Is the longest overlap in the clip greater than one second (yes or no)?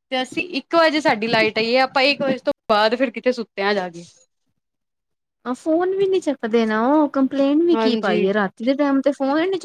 no